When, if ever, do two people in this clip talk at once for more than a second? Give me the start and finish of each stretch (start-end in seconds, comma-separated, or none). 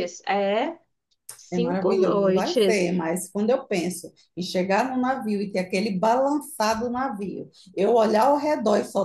1.5-2.9